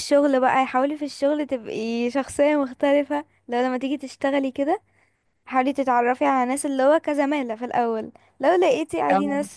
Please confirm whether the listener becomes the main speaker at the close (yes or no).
no